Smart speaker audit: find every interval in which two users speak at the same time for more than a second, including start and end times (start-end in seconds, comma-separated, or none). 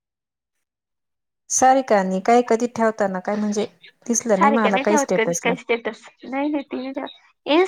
4.2-5.5